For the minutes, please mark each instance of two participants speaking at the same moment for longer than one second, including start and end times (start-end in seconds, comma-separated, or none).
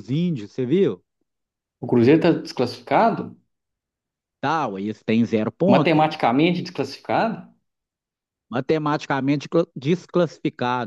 none